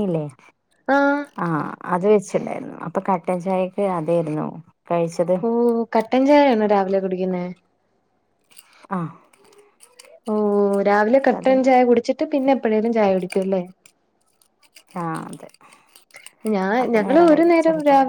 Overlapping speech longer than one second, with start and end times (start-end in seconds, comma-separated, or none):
none